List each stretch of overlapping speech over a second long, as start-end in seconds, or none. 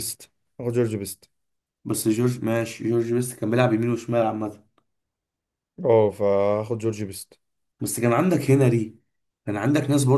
none